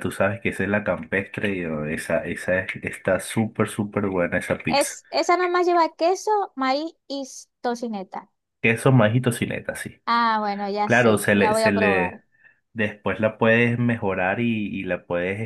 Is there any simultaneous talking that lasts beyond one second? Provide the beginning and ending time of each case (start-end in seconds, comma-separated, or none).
10.8-12.2